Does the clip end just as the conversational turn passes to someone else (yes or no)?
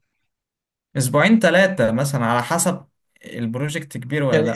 yes